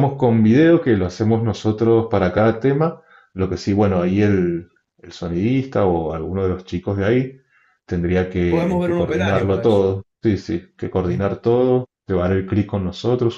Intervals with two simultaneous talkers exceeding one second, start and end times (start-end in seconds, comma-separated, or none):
8.5-9.8